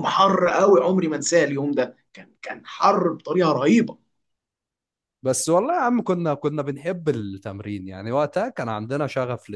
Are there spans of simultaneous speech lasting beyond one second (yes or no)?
no